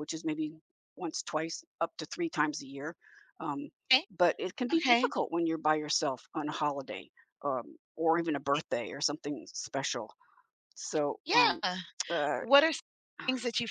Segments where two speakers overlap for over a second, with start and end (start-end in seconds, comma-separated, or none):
none